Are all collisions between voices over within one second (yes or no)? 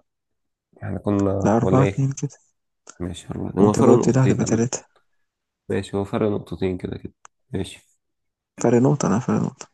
no